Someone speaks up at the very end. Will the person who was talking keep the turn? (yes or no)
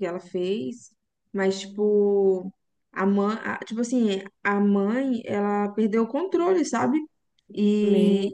yes